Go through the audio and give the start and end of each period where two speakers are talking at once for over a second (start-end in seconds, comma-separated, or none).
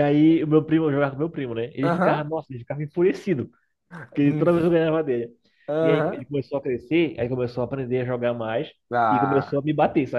none